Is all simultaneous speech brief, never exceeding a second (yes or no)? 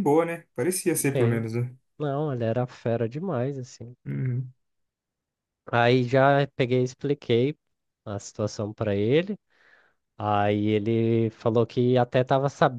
yes